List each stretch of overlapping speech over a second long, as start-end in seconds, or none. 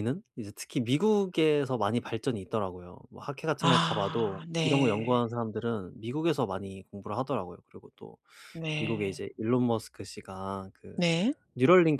3.6-5.2